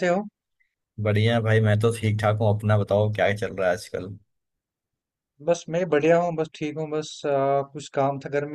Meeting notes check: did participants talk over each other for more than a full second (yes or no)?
no